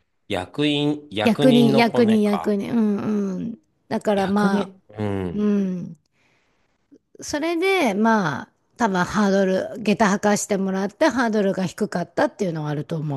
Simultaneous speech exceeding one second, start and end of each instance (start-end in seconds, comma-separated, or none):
1.2-2.5